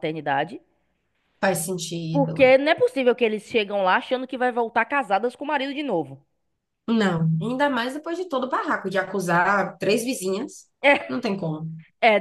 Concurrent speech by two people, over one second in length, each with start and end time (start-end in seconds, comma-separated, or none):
none